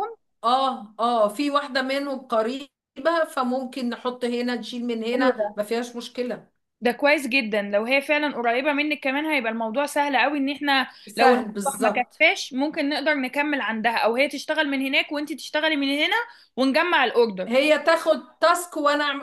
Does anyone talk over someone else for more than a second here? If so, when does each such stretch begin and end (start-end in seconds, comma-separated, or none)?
11.1-12.3